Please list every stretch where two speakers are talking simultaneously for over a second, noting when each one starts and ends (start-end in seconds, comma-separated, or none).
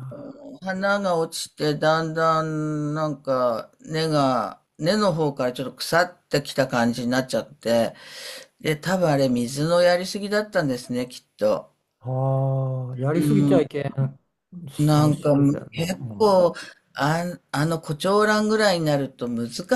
14.8-16.4